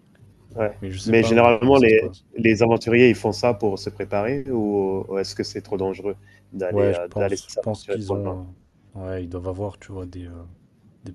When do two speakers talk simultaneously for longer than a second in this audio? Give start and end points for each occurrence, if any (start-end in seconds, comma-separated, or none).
0.8-2.3, 6.7-8.4